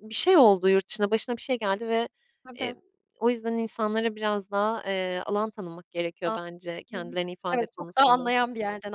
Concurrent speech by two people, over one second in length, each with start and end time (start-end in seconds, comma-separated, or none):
6.7-8.2